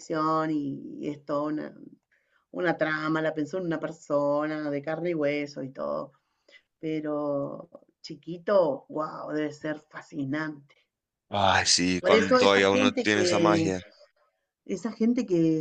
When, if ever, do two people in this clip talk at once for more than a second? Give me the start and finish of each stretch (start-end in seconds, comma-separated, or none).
12.0-13.7